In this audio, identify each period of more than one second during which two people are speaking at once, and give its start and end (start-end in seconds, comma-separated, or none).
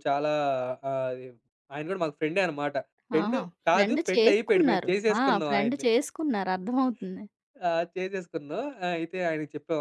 3.2-5.8